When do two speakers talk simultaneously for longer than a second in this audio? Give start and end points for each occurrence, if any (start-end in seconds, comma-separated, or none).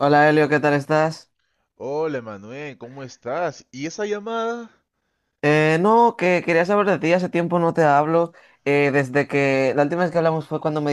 none